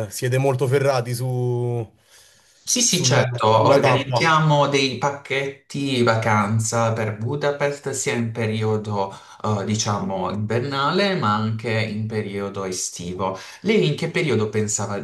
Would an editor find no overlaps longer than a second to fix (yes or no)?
no